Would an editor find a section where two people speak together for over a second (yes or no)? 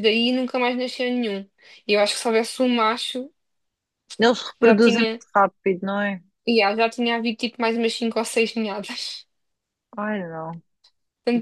no